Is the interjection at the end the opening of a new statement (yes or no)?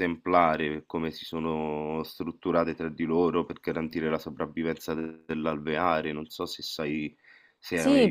yes